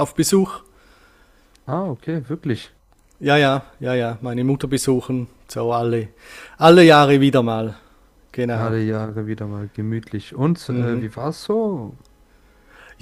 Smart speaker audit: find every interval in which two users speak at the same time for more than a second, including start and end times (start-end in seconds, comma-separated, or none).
none